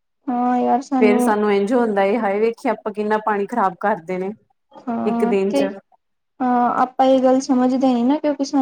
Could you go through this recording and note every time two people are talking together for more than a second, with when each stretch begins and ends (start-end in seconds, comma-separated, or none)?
none